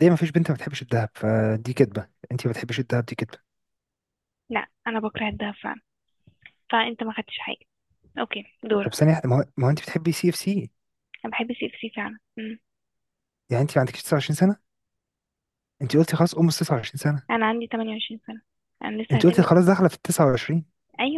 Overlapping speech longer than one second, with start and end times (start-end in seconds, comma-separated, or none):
none